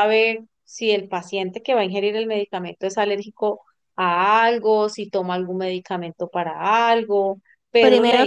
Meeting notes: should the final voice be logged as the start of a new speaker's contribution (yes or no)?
yes